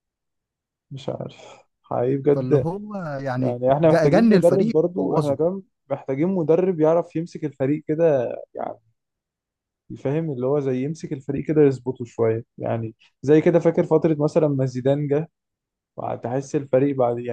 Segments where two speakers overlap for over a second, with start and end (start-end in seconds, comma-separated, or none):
3.4-5.4